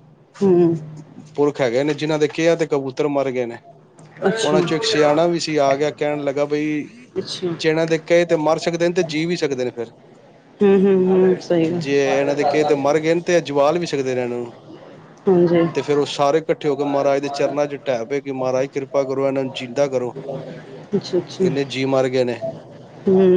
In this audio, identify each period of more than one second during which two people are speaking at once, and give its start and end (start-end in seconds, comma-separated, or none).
none